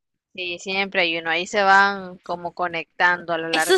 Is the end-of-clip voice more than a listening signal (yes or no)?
yes